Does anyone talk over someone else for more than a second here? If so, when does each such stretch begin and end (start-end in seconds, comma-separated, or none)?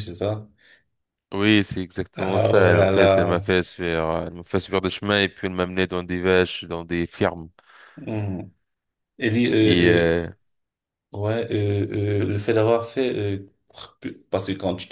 2.2-3.5